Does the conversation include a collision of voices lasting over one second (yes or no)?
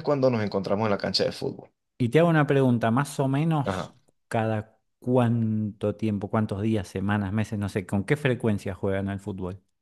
no